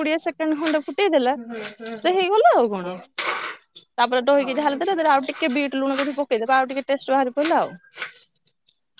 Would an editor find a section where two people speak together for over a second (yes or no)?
yes